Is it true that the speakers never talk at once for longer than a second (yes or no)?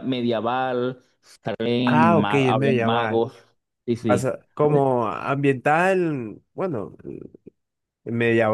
no